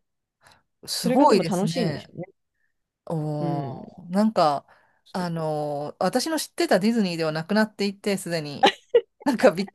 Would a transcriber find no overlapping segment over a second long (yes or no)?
no